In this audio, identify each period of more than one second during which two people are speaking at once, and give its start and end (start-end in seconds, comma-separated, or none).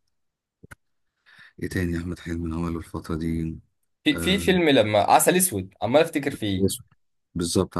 none